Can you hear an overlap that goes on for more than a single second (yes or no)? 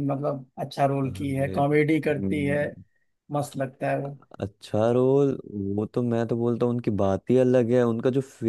yes